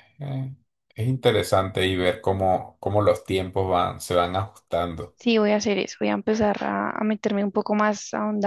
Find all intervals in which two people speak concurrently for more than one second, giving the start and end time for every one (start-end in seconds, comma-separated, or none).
none